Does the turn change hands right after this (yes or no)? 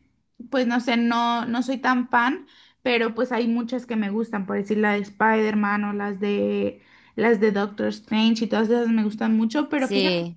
no